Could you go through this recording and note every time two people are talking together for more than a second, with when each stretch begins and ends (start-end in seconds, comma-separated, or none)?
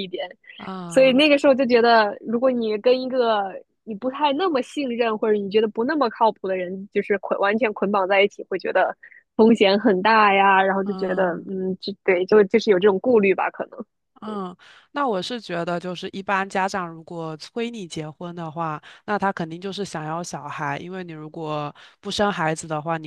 none